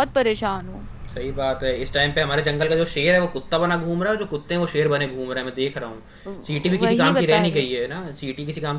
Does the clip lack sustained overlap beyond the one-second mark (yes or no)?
no